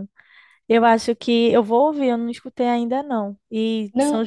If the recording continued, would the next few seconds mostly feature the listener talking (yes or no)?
no